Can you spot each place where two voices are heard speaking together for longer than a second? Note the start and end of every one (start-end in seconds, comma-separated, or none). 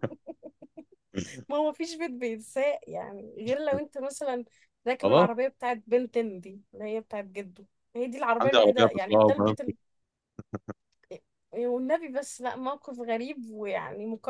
8.4-9.7